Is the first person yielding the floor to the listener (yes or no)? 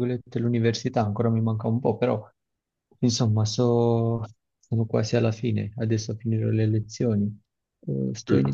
no